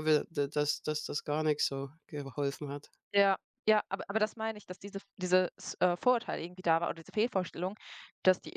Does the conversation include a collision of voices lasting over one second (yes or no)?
no